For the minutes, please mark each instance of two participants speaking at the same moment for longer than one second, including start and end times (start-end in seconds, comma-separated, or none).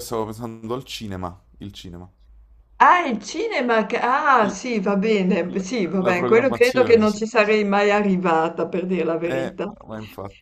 5.5-7.2